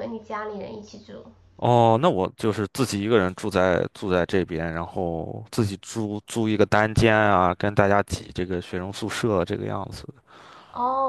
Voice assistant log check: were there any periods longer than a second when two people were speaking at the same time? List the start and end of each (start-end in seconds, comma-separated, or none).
none